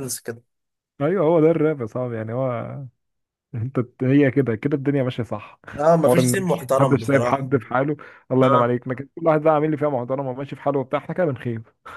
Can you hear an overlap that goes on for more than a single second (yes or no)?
yes